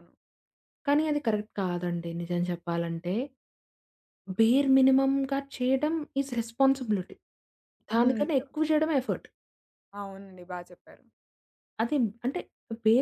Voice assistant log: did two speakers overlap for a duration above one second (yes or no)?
no